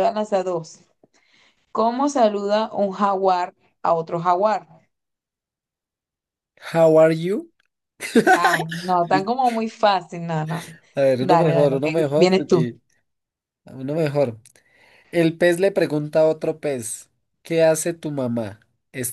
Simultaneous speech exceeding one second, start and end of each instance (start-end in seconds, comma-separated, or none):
11.2-12.6